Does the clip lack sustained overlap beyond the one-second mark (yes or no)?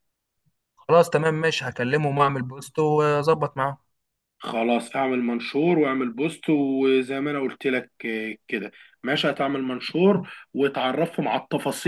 yes